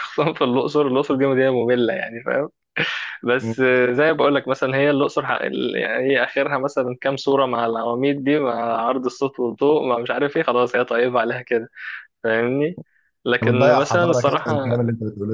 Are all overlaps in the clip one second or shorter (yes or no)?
no